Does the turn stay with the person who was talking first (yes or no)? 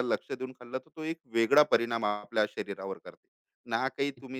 yes